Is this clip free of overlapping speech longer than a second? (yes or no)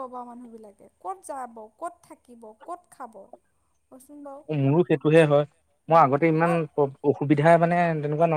yes